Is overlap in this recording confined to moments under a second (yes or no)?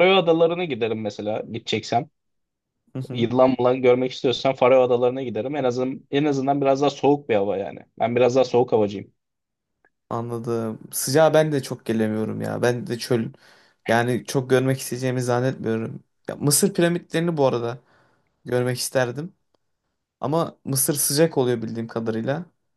yes